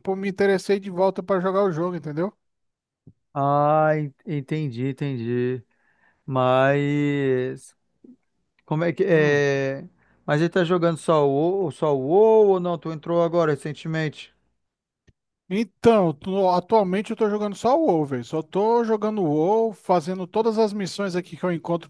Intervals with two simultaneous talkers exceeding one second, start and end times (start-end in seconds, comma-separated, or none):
none